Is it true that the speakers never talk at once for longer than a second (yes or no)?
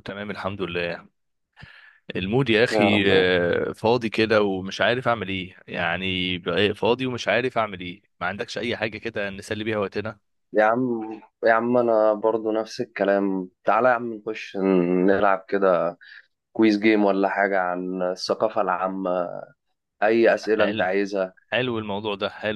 yes